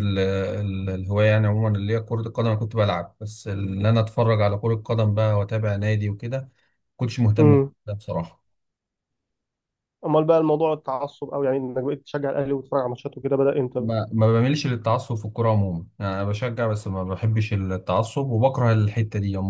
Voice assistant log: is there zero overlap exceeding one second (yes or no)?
yes